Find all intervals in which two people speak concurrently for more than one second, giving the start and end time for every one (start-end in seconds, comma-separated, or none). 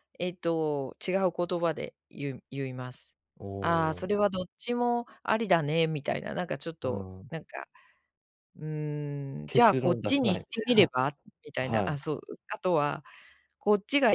9.5-10.9